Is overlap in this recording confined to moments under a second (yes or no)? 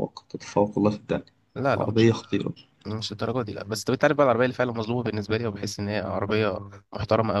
yes